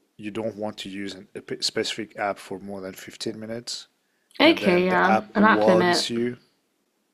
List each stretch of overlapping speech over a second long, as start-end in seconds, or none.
4.4-6.1